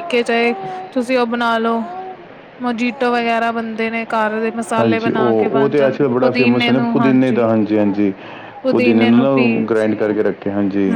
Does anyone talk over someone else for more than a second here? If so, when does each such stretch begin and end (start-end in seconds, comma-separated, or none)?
4.8-6.9